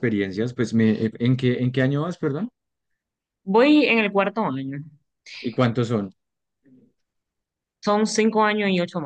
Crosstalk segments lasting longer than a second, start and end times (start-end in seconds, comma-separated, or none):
none